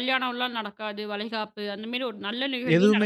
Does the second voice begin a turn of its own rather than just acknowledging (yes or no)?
yes